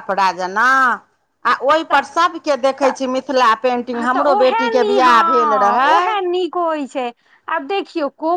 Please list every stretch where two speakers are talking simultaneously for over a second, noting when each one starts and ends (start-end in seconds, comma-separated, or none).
3.9-6.0